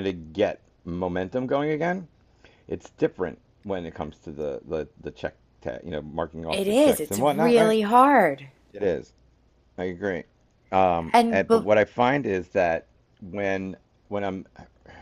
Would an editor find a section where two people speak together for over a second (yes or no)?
yes